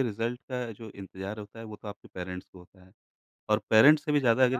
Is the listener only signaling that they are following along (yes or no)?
yes